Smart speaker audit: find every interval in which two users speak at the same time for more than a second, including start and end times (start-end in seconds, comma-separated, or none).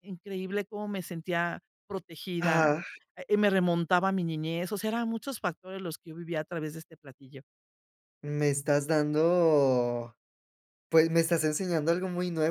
none